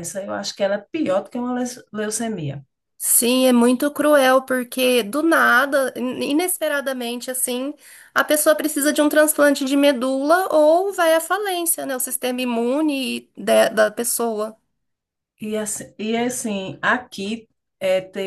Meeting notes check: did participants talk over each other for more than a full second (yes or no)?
no